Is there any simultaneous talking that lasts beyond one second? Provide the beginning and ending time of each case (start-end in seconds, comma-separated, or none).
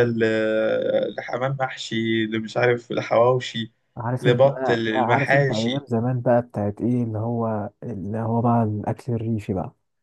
4.2-5.8